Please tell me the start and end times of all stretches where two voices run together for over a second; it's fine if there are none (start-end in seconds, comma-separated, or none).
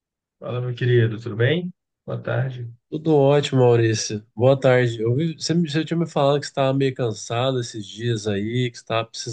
none